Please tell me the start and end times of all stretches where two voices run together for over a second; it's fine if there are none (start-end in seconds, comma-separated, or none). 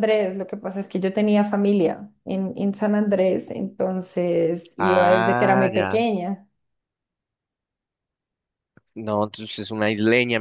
4.8-6.0